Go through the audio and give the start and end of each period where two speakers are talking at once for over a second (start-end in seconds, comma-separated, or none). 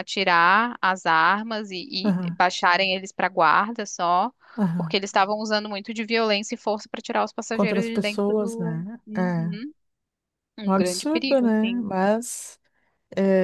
7.5-9.6, 10.6-11.9